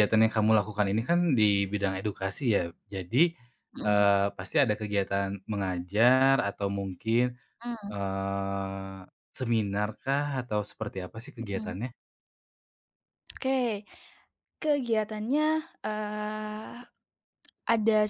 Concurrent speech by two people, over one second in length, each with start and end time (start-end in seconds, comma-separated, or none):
none